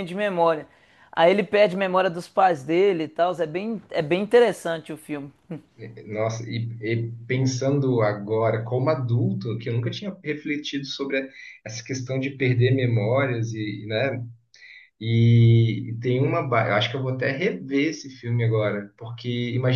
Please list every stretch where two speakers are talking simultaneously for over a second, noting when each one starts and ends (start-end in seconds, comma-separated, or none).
none